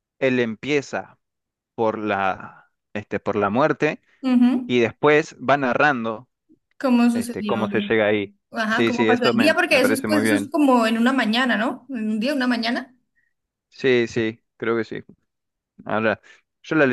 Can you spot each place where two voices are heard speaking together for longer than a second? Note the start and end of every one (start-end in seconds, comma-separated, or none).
8.5-10.5